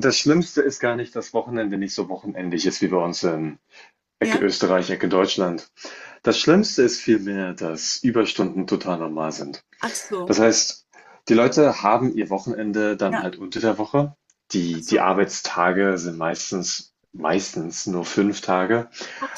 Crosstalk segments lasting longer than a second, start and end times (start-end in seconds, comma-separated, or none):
none